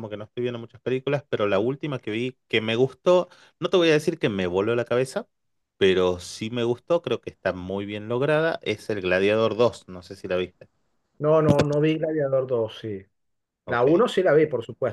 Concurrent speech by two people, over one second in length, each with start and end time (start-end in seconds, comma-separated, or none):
none